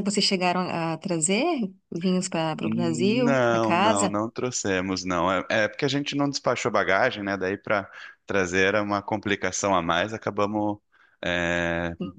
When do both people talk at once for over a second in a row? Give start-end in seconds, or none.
2.6-4.2